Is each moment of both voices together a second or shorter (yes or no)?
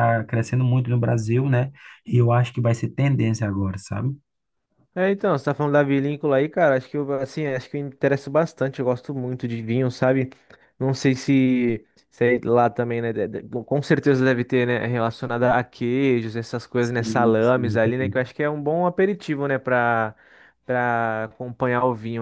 no